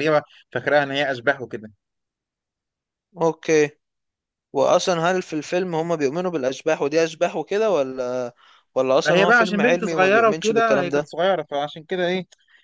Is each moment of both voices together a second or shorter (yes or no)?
no